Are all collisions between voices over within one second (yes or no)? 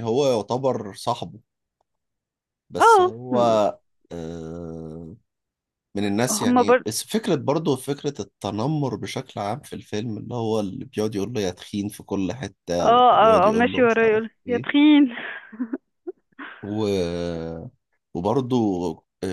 no